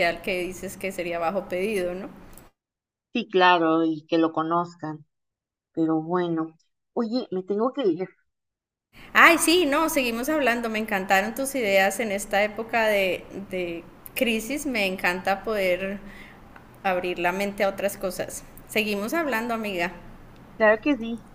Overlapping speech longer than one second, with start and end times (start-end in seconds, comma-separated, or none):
none